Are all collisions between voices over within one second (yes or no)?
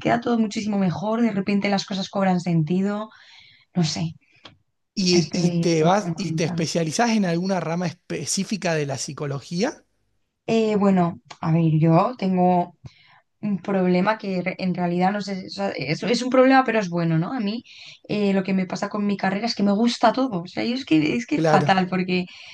no